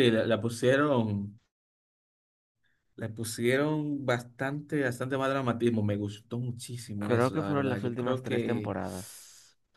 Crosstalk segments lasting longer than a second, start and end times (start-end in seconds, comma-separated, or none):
7.0-8.7